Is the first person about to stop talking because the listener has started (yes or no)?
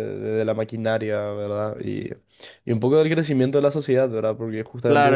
yes